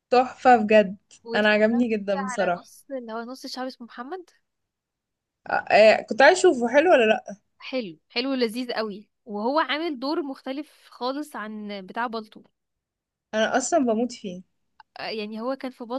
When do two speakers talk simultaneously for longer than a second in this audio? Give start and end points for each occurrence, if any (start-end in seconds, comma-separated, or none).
1.3-2.7